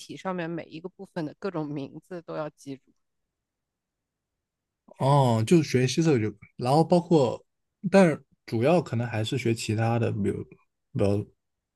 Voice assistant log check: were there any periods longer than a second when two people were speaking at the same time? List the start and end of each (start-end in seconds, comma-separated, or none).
none